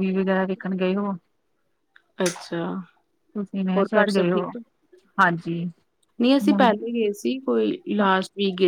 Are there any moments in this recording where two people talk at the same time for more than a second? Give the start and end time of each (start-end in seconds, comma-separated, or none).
none